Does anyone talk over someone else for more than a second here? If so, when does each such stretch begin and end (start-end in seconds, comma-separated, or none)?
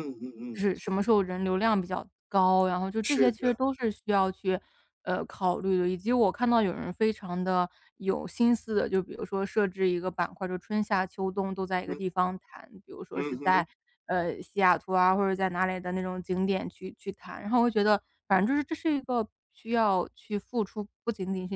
none